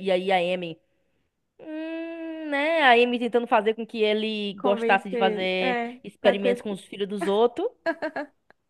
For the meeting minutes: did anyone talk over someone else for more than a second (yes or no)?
yes